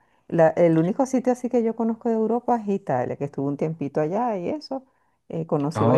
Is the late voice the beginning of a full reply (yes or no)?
no